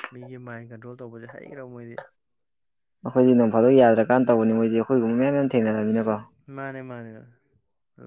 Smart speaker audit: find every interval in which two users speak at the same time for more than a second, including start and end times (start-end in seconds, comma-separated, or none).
none